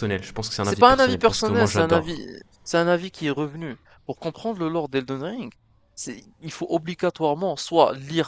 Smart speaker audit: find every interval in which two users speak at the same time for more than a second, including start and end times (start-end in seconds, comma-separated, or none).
0.6-2.2